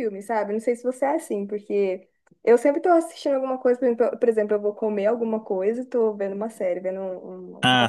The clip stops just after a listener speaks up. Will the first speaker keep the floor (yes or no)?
no